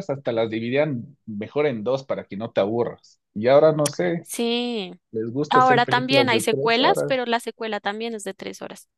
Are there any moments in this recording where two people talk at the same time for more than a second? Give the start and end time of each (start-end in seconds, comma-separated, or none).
5.5-7.2